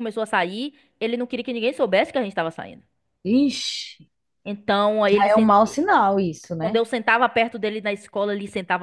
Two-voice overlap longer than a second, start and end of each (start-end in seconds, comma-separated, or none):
none